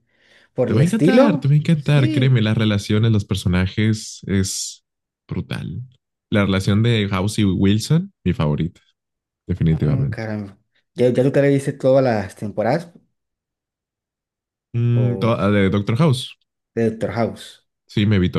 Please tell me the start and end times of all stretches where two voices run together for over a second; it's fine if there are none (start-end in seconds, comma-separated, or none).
0.7-2.4